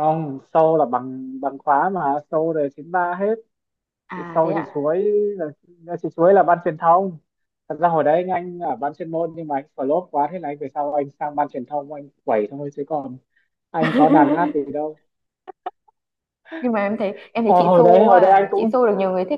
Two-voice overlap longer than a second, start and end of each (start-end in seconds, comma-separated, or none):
17.4-18.7